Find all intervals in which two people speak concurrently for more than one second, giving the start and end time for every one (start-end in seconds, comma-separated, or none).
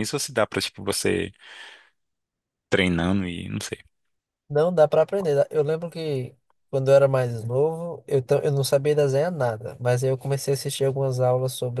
none